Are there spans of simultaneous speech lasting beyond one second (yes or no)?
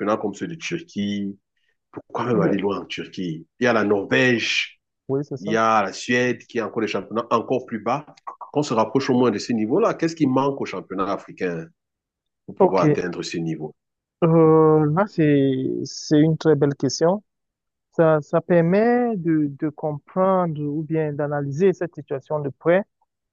no